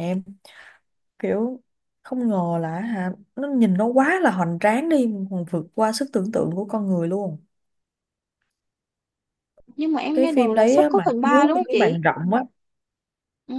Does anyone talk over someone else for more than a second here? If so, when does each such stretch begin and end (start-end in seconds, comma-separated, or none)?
10.1-12.0